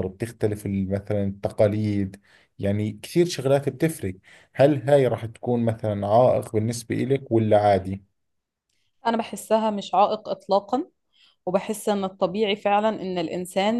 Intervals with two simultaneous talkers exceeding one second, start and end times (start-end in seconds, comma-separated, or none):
none